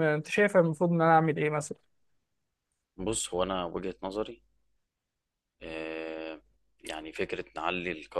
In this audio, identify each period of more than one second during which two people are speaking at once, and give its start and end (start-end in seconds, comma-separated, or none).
none